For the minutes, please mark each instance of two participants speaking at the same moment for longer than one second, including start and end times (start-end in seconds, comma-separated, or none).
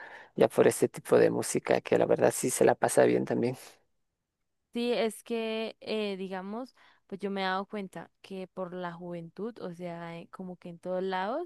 none